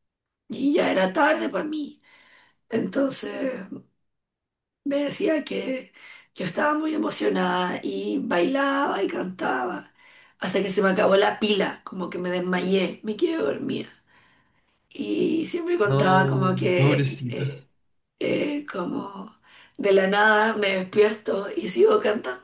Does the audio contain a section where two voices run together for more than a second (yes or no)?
yes